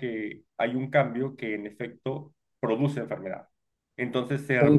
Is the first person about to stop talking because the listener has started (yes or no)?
yes